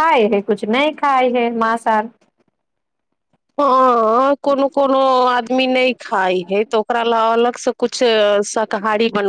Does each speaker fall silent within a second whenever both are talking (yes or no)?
yes